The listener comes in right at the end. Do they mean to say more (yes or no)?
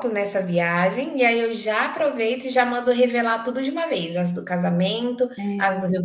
no